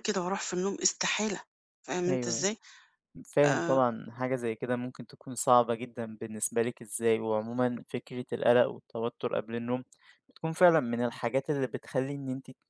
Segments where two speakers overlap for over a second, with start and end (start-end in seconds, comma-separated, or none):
none